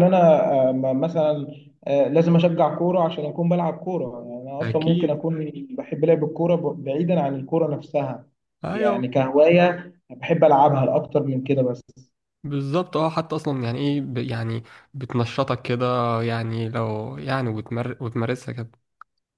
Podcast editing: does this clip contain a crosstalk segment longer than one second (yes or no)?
no